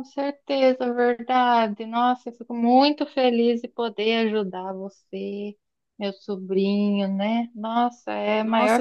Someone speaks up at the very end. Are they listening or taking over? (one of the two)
taking over